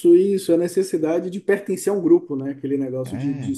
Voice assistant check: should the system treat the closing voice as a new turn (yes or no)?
no